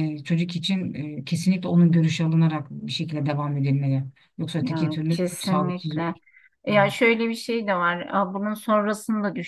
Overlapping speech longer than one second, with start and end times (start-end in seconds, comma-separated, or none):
4.6-6.1